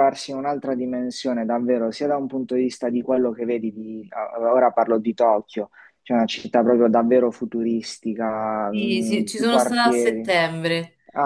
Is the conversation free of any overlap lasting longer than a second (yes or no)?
no